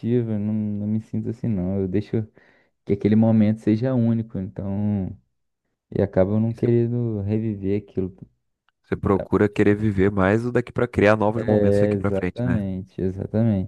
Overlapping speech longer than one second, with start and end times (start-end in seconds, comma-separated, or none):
11.3-12.6